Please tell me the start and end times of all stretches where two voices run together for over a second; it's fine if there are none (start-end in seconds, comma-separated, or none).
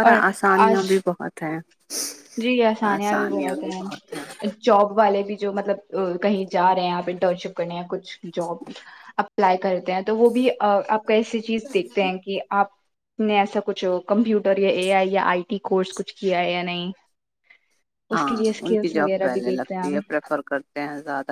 18.1-20.0